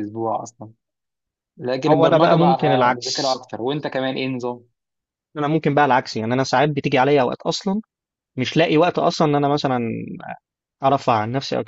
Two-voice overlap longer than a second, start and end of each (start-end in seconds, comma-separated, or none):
1.9-3.4